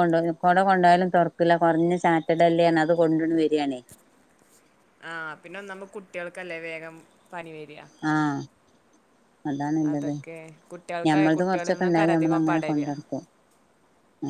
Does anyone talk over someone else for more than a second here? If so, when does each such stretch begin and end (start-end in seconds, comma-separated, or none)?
11.1-12.9